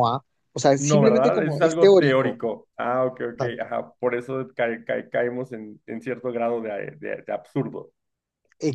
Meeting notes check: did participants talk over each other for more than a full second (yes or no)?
yes